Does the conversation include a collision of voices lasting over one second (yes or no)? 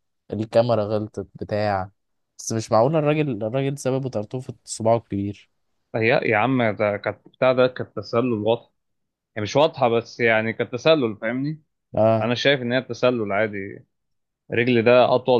no